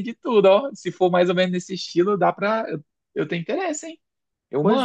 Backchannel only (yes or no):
no